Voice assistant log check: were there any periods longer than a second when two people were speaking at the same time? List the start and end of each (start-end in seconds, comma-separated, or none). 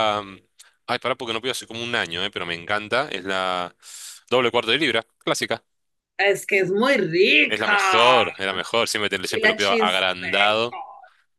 9.3-10.8